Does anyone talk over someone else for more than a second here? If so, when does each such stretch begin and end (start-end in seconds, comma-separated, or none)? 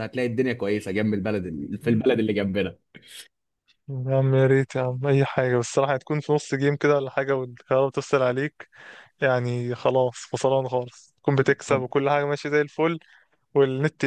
none